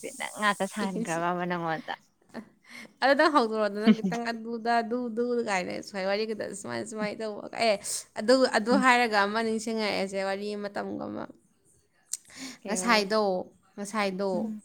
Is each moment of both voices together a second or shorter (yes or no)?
yes